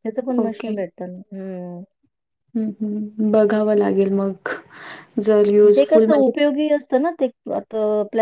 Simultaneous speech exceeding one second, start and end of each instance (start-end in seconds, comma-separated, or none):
none